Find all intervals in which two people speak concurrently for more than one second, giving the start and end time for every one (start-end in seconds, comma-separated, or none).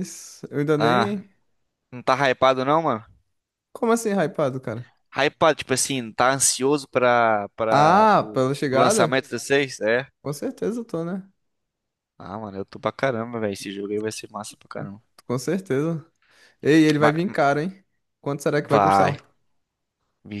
7.7-9.2